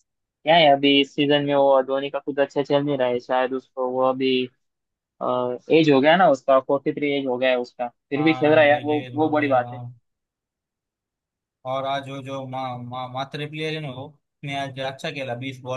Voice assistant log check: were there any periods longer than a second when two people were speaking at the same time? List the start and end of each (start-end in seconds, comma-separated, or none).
8.2-9.8